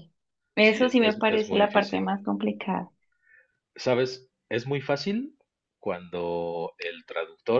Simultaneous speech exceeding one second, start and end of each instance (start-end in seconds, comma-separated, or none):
0.6-2.1